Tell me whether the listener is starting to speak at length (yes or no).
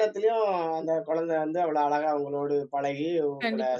no